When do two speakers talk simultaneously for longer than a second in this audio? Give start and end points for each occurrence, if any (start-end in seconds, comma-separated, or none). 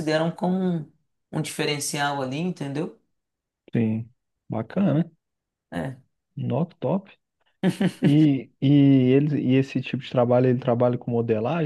none